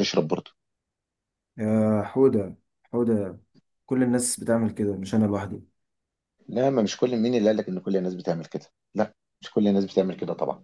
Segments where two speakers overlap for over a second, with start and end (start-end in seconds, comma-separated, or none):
none